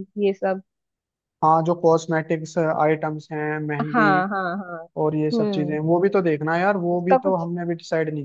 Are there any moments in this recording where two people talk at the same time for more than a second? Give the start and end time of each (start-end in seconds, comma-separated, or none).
none